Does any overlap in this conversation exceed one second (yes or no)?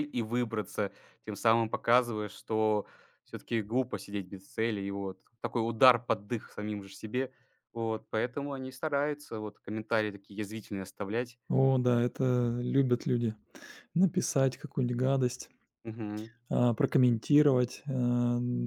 no